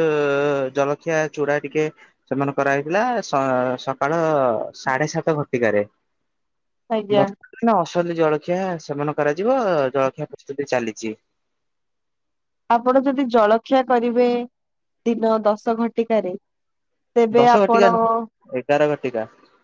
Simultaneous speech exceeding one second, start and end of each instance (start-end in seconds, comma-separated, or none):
none